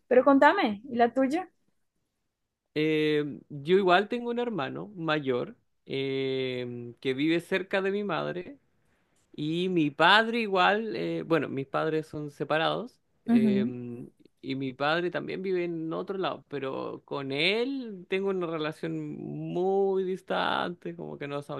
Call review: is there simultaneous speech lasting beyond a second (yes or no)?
no